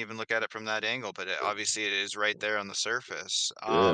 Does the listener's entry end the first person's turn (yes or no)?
yes